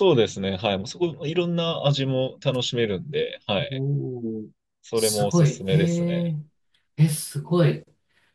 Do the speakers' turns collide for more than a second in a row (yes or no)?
yes